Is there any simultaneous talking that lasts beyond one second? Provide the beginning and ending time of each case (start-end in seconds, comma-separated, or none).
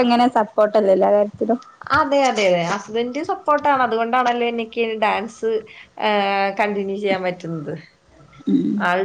none